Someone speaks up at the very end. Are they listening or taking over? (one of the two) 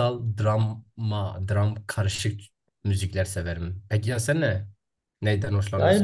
taking over